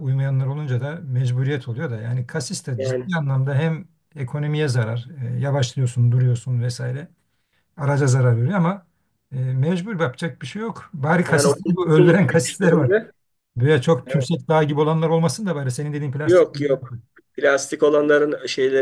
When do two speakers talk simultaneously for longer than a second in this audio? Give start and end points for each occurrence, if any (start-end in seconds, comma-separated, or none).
11.3-12.9